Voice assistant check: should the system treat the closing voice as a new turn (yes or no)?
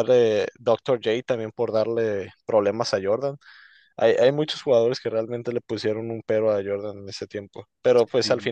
no